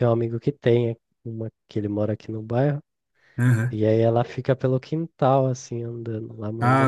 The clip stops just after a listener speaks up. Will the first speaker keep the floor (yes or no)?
no